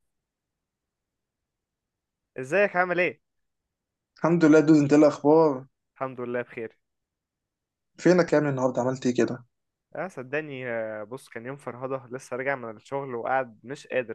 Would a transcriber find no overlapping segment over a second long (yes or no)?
yes